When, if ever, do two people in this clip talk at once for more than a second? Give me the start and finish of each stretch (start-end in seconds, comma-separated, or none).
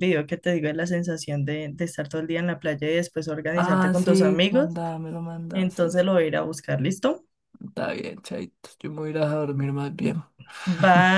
3.5-4.8